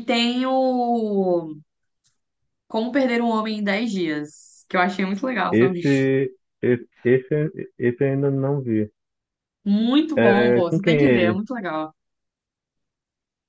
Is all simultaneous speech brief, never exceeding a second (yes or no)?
no